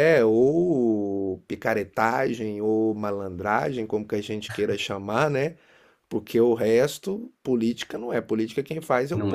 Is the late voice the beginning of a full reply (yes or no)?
no